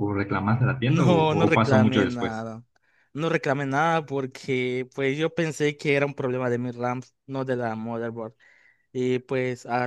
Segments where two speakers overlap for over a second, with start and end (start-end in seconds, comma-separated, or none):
0.8-2.5